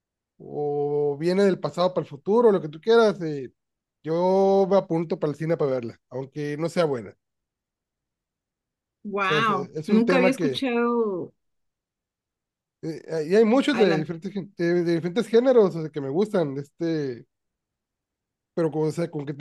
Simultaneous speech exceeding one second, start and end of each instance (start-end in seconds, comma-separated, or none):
9.2-10.7